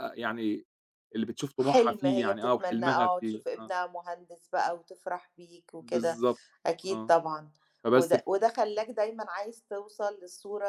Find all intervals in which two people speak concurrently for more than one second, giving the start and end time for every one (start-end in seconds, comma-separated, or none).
1.6-3.7